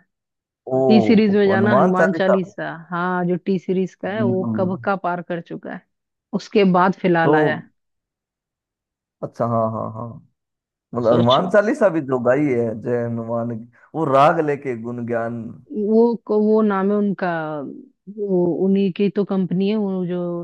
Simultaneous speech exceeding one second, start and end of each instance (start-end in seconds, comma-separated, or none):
0.9-2.4